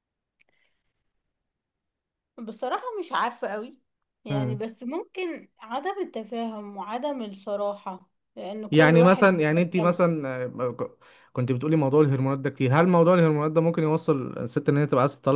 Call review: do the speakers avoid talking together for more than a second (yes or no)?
no